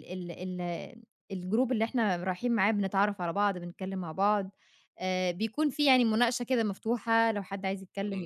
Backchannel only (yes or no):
no